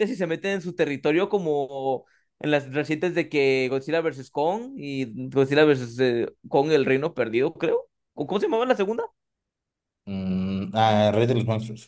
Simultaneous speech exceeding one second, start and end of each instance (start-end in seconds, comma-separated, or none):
none